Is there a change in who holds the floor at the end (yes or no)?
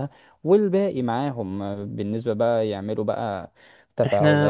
no